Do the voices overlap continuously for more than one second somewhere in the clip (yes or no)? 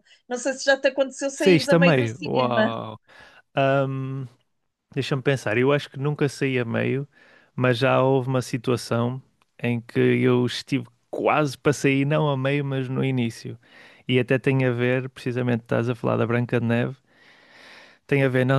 yes